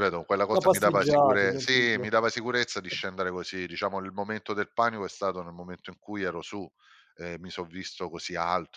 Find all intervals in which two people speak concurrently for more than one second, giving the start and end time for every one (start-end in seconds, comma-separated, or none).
0.5-2.0